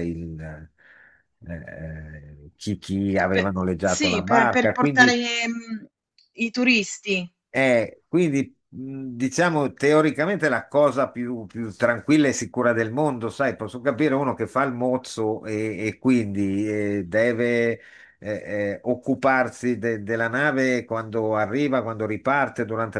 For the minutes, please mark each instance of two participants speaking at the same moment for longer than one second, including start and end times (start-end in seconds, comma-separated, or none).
3.3-5.2